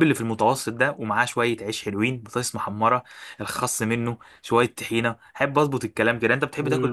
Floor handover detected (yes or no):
yes